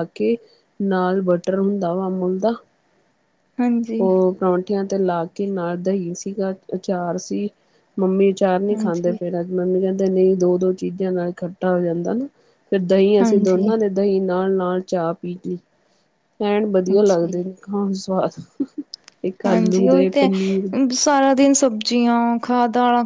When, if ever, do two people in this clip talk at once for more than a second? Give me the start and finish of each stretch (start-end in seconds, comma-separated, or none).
19.4-20.7